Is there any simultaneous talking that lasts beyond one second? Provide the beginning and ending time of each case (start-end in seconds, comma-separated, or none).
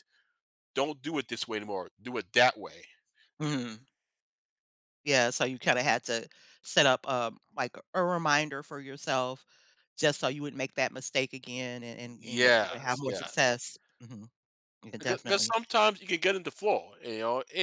12.2-13.5